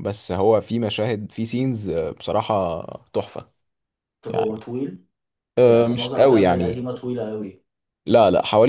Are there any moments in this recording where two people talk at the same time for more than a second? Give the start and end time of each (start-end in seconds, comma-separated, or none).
5.6-6.9